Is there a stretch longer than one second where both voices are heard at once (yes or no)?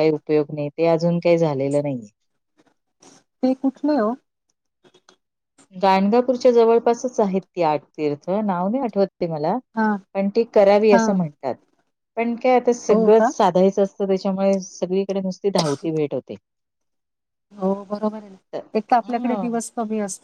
no